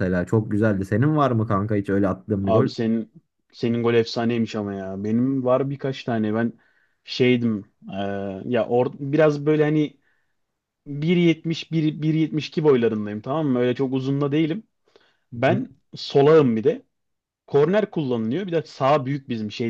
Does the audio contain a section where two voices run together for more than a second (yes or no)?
no